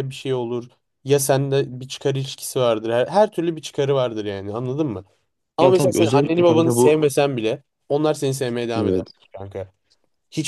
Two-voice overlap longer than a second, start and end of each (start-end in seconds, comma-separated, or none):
5.6-7.0